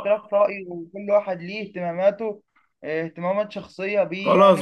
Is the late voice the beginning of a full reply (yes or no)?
yes